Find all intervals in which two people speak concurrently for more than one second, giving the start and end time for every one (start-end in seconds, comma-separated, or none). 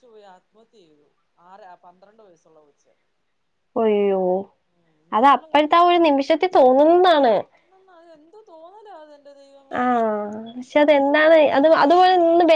none